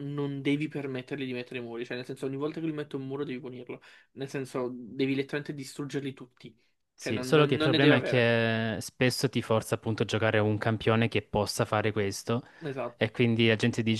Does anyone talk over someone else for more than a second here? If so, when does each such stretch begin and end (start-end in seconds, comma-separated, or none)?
7.0-8.3